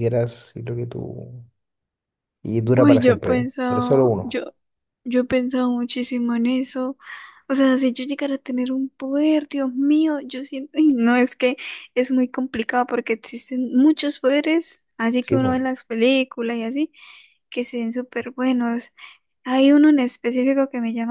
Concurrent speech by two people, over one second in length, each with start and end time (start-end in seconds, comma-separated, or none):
2.8-4.4